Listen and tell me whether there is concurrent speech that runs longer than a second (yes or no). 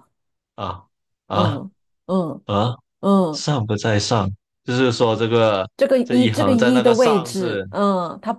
yes